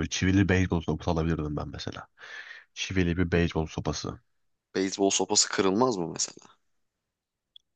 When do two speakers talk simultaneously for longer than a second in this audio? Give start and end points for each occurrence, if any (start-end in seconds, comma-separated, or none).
none